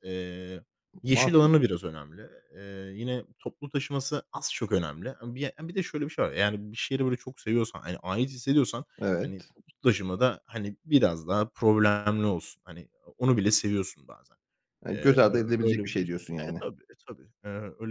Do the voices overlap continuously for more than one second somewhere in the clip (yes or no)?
yes